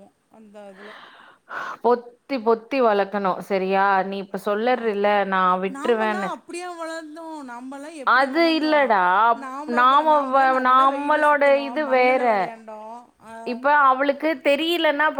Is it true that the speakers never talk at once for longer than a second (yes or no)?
no